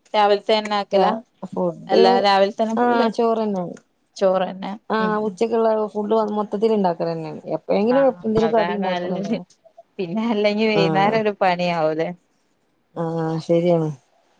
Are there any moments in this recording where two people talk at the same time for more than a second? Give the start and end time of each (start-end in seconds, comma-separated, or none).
none